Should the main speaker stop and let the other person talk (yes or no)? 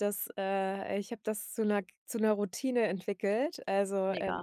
no